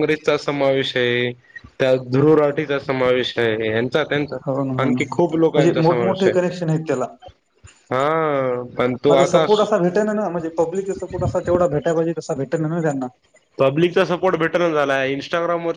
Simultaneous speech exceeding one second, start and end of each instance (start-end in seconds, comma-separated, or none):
4.8-6.3